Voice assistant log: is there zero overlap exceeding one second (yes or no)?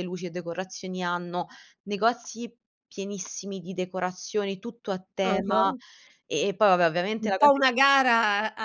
yes